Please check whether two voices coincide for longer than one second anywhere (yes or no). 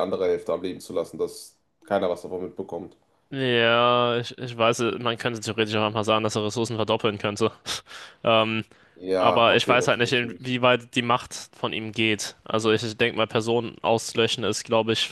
yes